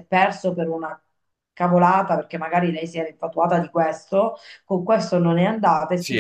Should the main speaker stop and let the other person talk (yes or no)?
no